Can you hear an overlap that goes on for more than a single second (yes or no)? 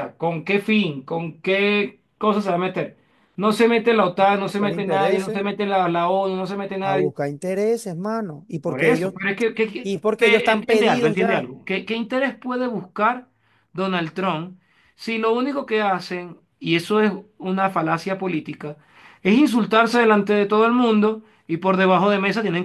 yes